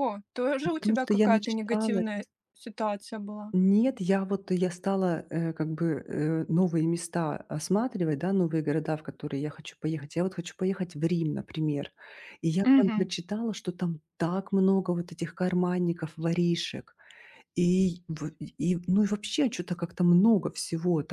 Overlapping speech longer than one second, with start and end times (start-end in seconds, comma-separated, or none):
0.6-2.1